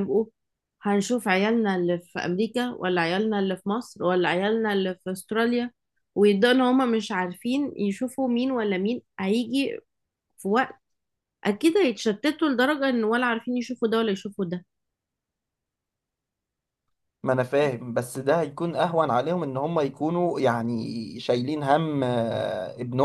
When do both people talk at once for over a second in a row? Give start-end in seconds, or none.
none